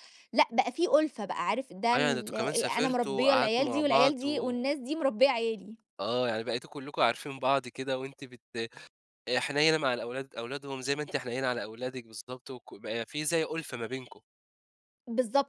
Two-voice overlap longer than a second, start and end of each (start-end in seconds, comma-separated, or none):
1.9-4.5